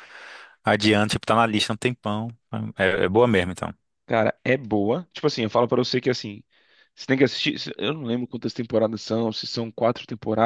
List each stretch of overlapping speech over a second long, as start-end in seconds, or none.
none